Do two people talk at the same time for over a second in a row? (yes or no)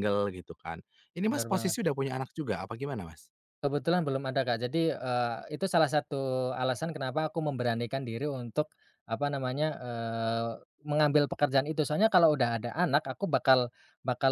no